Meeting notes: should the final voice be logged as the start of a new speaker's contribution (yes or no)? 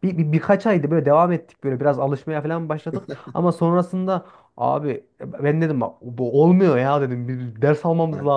no